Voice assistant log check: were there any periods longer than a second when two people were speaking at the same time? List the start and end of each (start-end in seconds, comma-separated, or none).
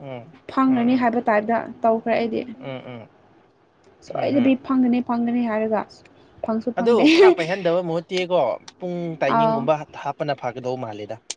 none